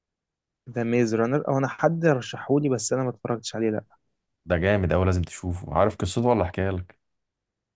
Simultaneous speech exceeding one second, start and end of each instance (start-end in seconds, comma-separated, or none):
none